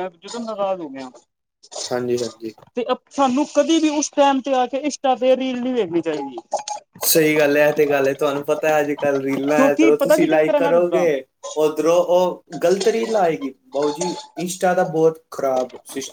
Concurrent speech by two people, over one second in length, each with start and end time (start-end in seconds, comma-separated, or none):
9.6-11.1